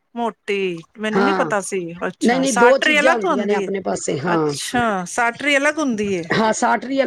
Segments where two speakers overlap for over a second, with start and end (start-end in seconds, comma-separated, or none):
2.3-3.7